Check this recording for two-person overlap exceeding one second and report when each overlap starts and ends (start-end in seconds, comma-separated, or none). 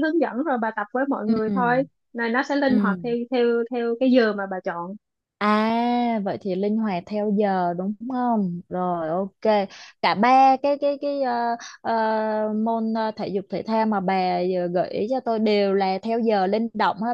none